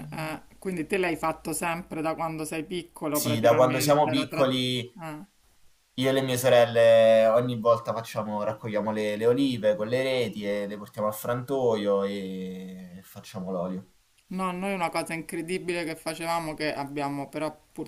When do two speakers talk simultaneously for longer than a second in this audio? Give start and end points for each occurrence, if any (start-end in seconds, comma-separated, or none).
3.1-4.5